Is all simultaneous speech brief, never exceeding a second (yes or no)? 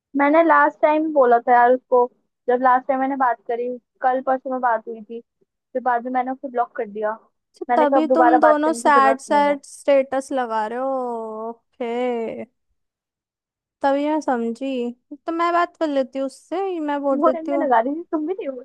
no